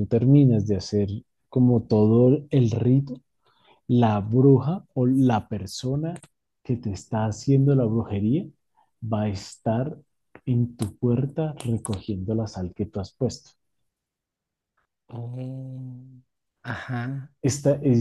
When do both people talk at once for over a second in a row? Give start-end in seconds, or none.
none